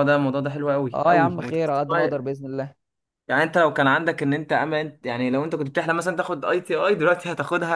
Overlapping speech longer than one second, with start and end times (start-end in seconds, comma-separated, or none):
0.9-2.3